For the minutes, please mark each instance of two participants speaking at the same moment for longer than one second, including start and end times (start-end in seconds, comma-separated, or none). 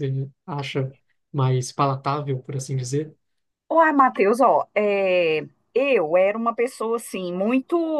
none